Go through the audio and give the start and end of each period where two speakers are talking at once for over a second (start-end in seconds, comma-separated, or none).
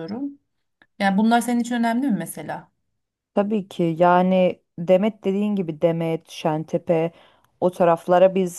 none